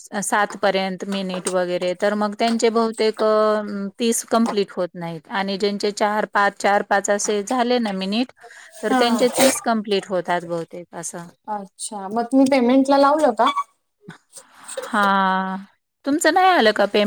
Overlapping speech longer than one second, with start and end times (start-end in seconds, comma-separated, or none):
none